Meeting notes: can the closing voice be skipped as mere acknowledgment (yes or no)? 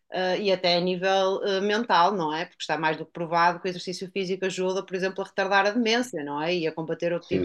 no